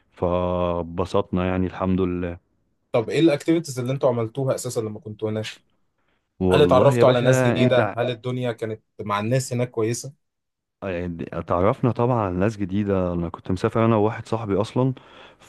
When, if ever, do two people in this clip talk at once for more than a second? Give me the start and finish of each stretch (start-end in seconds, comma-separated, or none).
6.5-8.0